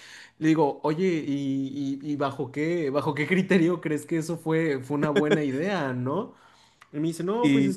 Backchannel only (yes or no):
yes